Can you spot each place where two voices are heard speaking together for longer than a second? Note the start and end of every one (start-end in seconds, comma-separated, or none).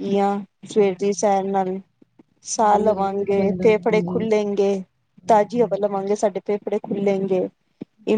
2.5-4.3